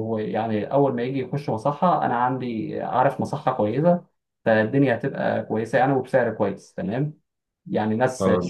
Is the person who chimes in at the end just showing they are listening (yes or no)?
yes